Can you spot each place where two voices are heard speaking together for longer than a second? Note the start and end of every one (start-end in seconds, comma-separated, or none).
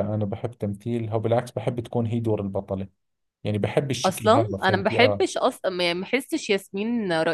4.0-5.2